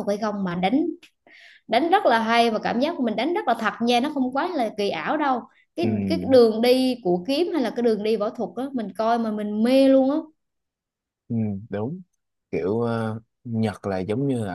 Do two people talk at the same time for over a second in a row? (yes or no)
no